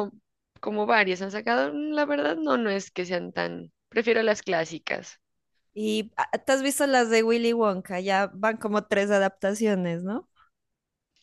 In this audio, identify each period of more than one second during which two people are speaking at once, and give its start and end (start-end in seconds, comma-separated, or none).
none